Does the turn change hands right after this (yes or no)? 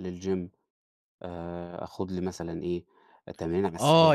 yes